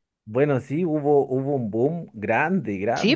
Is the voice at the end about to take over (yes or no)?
no